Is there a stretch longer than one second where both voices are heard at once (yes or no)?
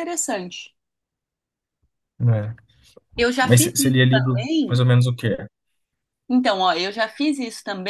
yes